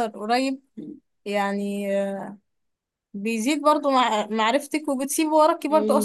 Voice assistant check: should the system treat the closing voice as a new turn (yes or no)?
yes